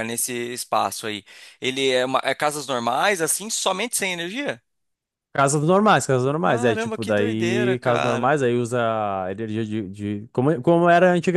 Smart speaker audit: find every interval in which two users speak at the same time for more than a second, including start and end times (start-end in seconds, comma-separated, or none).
6.4-8.3